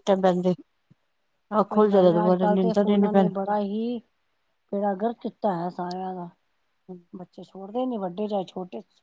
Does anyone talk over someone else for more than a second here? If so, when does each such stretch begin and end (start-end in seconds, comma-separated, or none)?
1.7-3.3